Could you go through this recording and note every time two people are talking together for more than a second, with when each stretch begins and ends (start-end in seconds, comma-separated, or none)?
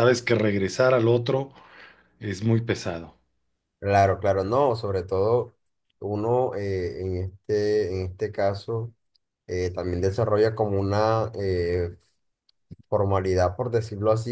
none